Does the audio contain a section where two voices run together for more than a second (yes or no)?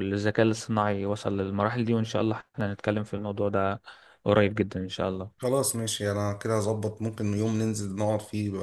no